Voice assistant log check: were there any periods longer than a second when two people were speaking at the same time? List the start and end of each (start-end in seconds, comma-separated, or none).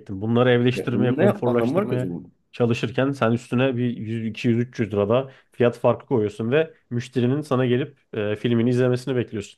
0.8-2.3